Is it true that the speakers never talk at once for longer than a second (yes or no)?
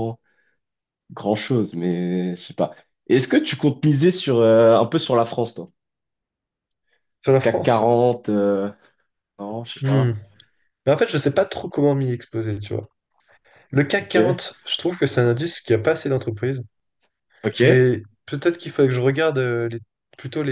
yes